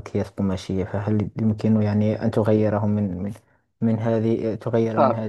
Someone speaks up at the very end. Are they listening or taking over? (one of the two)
listening